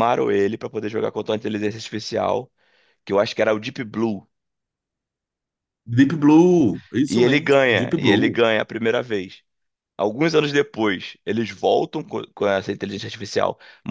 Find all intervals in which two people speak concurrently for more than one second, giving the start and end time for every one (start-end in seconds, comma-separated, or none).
7.1-8.4